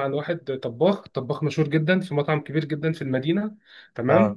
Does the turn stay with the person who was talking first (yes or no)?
yes